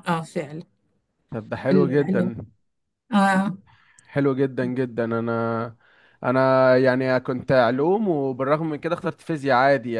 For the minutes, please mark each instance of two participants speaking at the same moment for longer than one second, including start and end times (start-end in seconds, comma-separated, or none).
none